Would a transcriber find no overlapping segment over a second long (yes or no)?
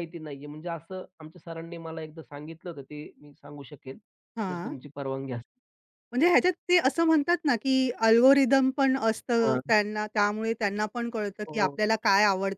yes